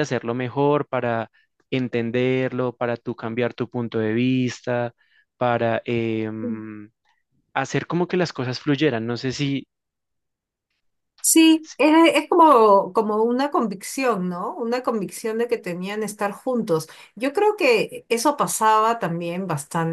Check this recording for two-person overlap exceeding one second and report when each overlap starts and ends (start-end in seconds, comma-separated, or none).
none